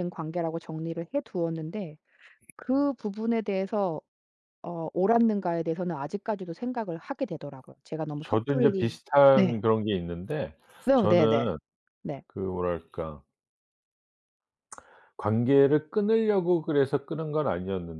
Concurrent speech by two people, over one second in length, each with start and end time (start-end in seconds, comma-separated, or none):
8.2-9.6